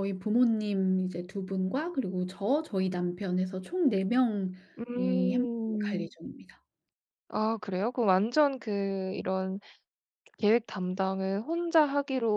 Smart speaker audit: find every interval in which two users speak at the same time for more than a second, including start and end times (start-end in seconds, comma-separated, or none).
4.8-6.1